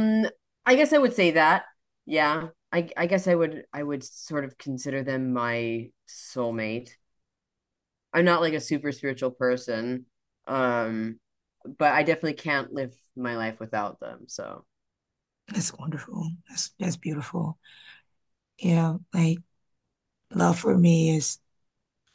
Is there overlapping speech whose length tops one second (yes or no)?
no